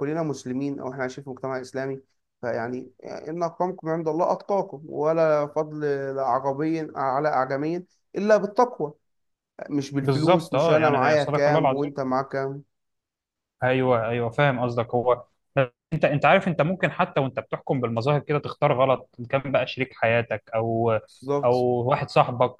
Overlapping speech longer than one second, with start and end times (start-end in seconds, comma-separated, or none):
10.0-11.9